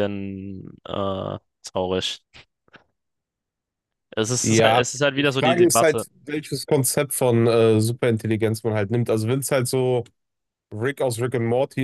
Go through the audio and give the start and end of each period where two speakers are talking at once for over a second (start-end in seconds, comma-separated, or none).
4.4-6.0